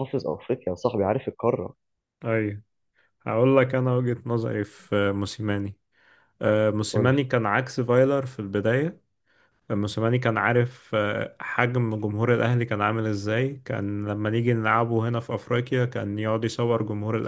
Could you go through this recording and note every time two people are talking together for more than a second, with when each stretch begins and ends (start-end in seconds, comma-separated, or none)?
none